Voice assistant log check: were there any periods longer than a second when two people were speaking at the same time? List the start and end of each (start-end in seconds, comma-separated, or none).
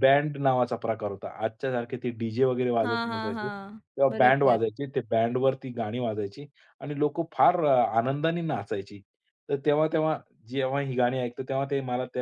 2.9-4.6